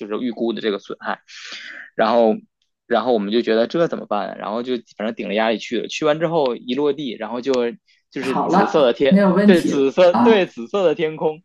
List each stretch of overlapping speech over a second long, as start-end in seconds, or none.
8.2-10.5